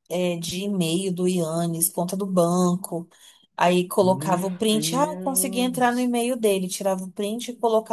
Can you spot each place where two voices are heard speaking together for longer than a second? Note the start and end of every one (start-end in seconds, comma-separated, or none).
4.0-6.1